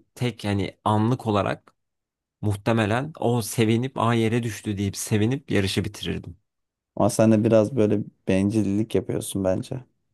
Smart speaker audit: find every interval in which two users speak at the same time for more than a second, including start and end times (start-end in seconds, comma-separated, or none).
none